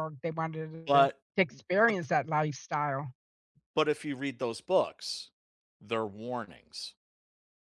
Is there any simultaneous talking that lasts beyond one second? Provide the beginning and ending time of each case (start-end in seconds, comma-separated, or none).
none